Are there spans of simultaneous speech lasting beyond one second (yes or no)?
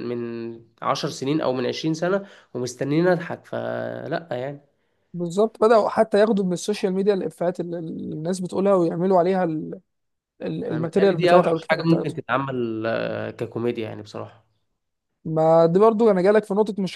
yes